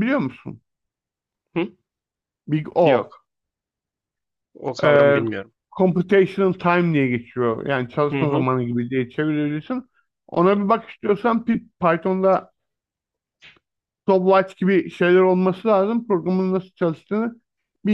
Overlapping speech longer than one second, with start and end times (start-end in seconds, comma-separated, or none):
none